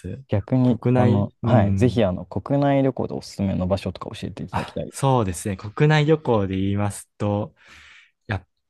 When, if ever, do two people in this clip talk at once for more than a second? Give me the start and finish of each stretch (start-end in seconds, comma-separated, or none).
0.6-2.0